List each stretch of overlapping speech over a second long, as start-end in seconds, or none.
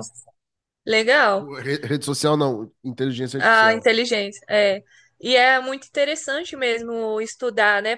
none